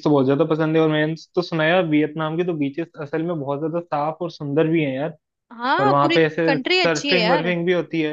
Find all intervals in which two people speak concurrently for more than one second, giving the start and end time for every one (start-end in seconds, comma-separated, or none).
5.8-7.5